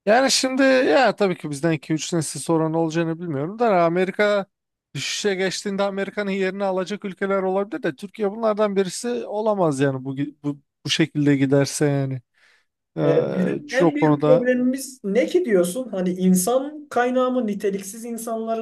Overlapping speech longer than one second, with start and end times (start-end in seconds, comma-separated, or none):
13.0-14.5